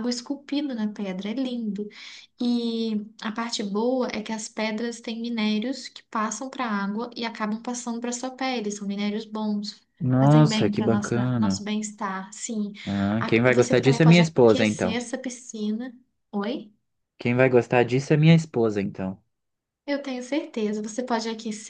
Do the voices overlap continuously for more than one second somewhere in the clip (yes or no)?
yes